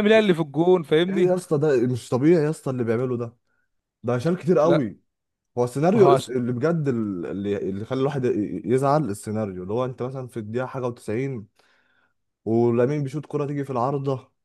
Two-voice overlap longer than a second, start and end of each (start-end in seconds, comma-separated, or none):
none